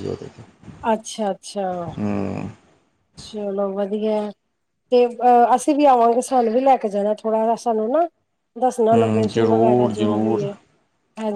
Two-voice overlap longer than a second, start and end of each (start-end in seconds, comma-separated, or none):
8.9-10.4